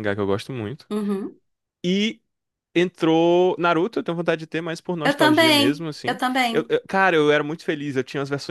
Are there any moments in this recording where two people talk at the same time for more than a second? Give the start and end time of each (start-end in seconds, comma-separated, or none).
5.0-6.7